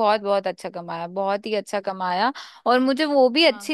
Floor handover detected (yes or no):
no